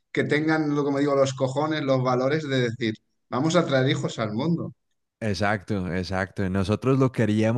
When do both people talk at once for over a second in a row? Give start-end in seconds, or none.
none